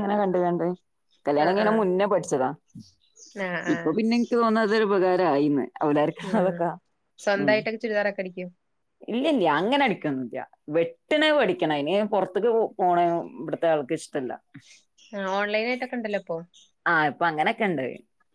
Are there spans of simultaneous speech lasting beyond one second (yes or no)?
no